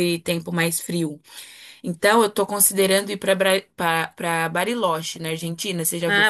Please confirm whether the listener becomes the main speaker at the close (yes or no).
yes